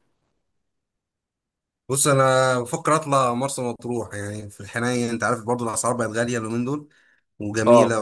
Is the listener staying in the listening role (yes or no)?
yes